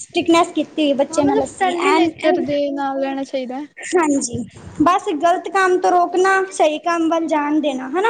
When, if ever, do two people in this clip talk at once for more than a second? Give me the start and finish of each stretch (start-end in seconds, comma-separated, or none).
none